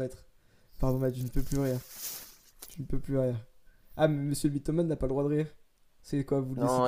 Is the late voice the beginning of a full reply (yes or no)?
yes